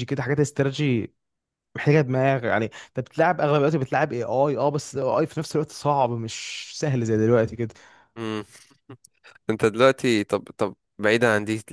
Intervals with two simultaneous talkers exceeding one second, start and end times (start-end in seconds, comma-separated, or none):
none